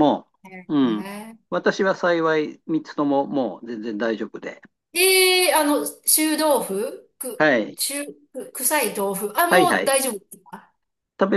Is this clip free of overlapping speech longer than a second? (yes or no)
yes